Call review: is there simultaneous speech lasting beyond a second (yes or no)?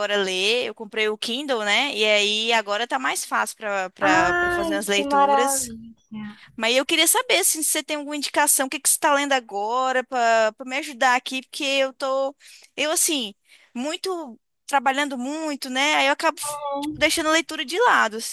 yes